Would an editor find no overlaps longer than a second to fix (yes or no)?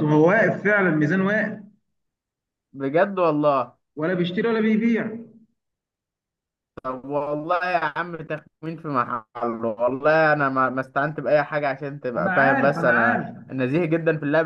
no